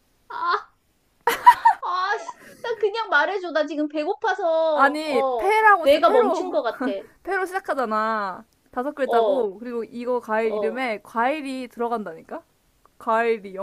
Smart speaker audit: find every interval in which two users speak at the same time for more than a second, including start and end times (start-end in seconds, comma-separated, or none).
4.7-6.6